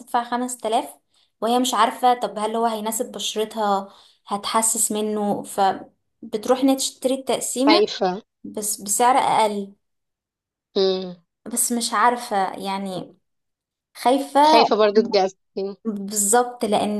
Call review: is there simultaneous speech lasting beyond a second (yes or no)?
no